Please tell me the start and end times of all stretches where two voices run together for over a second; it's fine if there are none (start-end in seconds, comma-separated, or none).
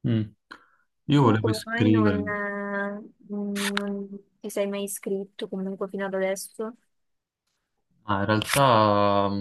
1.2-2.4